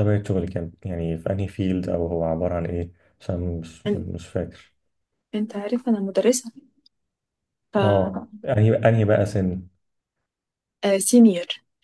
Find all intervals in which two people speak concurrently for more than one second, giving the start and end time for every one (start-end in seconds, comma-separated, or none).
none